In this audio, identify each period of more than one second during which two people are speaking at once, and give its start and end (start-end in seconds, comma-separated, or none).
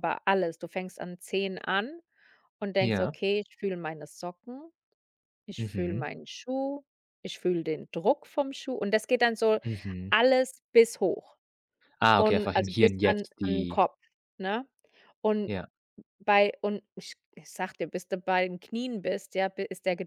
12.2-13.8